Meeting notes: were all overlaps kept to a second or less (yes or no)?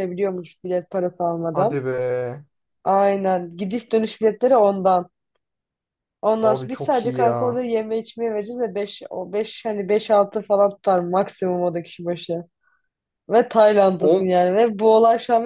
no